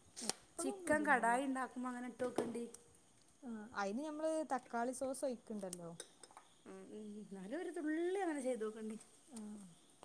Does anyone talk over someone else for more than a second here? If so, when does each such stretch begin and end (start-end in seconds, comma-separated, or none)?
none